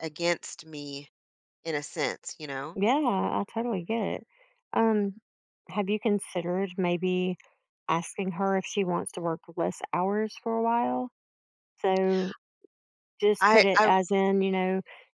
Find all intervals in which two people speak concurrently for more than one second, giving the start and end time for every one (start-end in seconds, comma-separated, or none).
none